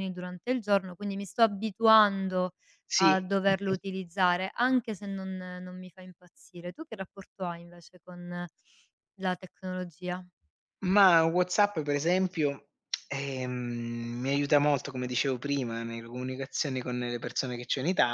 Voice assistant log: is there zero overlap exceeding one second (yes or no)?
yes